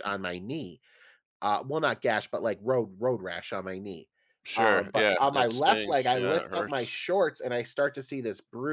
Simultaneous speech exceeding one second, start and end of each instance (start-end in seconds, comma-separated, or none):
4.6-7.0